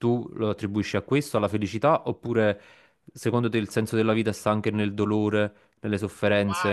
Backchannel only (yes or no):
no